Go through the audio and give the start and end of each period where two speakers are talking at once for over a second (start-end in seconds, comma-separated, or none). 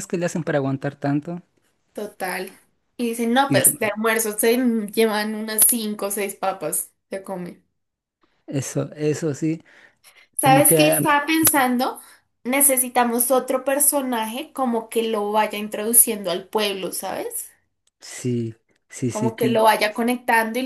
none